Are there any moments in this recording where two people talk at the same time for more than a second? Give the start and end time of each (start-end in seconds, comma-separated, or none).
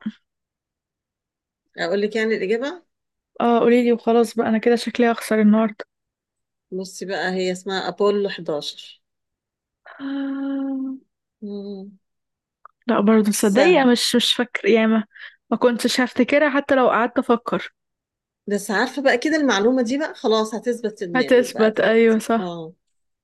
21.1-22.5